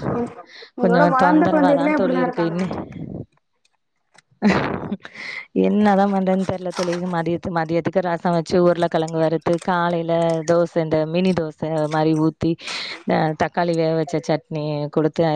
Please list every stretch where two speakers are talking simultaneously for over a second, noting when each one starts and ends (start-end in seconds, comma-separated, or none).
0.8-2.6